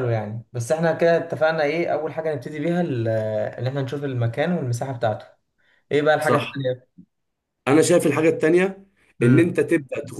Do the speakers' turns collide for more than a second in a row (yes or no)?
no